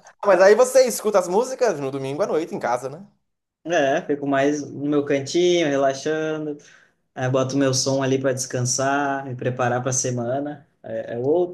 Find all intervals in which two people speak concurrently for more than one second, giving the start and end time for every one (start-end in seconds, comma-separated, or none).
none